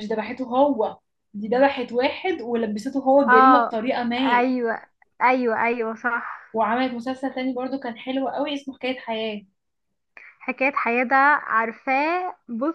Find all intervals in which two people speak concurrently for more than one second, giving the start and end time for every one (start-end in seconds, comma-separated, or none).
none